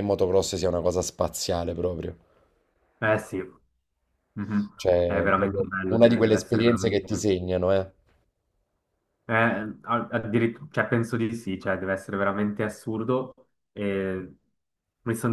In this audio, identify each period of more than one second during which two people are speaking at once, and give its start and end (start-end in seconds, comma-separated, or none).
5.0-7.1